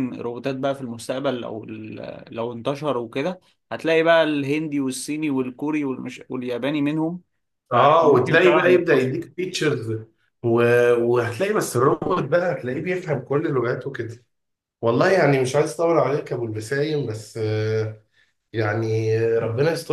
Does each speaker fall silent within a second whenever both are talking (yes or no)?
no